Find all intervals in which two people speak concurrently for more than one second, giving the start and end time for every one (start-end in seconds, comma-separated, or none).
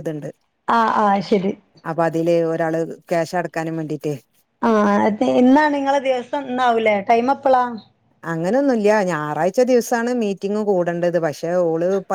none